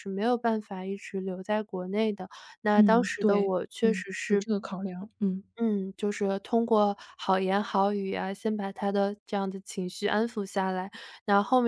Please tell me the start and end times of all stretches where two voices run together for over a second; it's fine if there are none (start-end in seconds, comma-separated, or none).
2.7-4.4